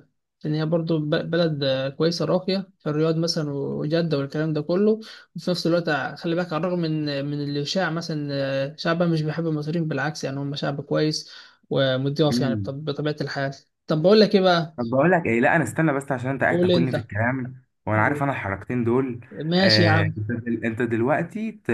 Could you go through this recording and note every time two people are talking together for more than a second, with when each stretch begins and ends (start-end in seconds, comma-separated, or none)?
none